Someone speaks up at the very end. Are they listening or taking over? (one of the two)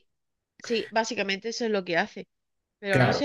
listening